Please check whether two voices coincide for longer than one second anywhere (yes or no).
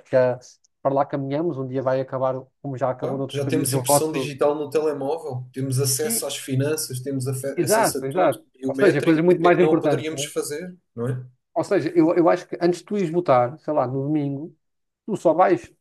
yes